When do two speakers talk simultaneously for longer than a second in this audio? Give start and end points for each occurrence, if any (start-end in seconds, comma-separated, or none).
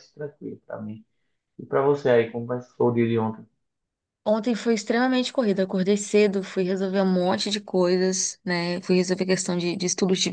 none